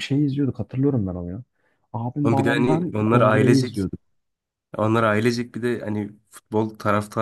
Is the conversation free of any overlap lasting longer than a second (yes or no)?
no